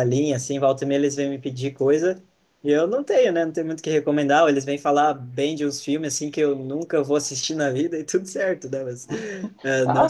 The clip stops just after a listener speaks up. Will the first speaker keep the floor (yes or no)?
yes